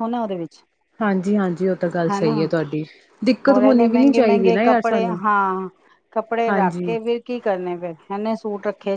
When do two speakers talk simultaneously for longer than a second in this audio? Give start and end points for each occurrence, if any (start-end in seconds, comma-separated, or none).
3.5-5.2